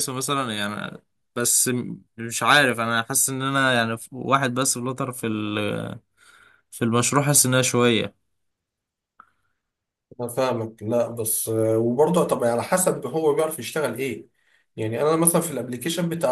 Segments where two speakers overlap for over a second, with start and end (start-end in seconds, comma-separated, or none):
none